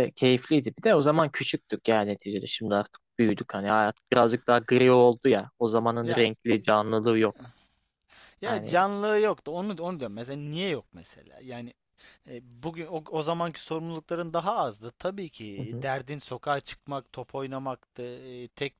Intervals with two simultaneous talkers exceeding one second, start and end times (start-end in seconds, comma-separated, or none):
none